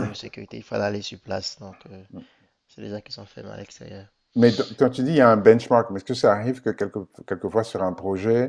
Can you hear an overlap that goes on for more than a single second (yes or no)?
no